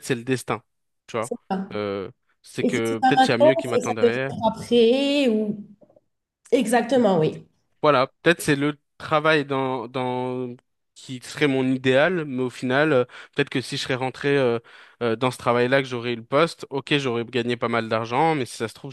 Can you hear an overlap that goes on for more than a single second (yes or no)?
yes